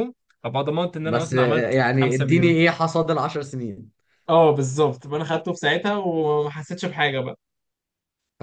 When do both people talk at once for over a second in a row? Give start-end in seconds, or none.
1.1-2.6